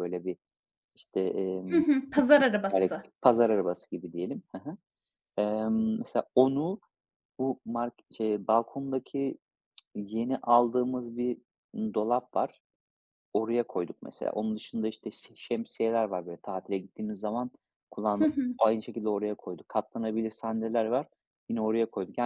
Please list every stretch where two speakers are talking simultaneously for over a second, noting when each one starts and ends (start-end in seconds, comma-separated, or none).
1.6-3.1